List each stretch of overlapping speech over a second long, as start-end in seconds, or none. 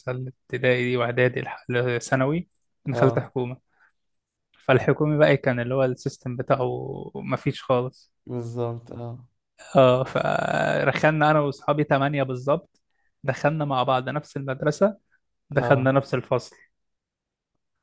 none